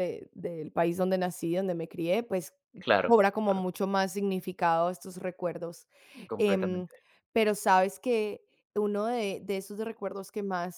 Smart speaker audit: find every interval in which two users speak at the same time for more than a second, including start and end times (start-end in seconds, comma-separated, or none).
none